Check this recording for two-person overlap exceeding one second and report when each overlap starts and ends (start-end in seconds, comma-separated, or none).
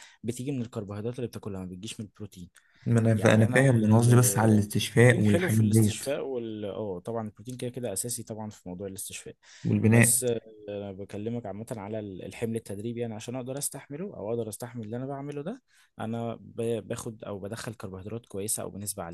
3.2-6.0